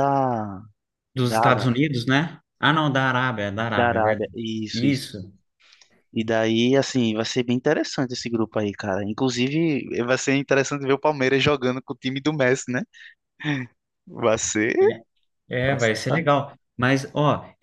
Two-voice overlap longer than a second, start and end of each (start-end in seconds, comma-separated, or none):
3.7-5.1